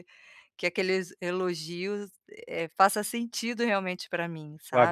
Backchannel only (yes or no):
no